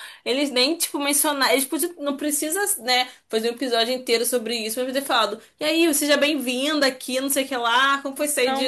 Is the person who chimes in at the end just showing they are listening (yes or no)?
yes